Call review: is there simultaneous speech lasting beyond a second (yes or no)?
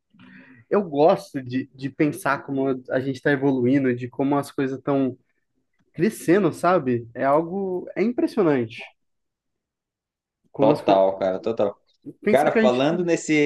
no